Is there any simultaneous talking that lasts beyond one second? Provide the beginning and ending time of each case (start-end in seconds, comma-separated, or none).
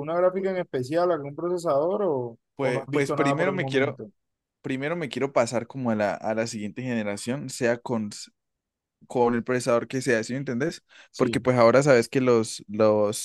2.5-4.0